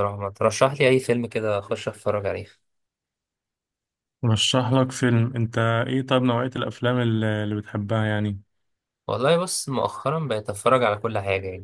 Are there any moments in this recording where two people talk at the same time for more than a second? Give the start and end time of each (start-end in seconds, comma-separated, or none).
none